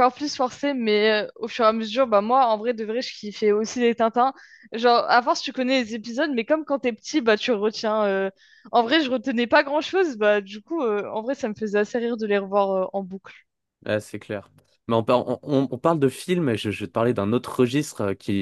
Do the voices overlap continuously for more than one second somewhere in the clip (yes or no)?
no